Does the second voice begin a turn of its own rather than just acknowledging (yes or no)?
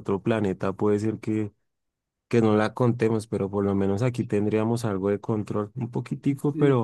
yes